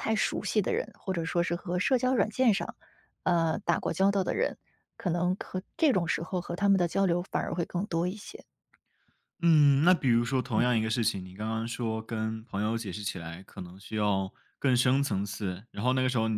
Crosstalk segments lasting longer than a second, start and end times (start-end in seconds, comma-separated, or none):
none